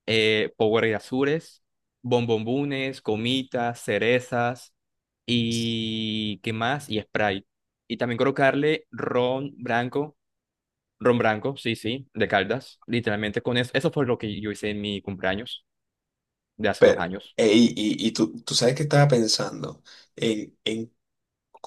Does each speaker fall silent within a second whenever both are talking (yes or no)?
yes